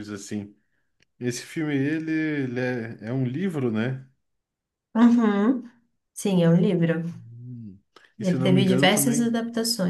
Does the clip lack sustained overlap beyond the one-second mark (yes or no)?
no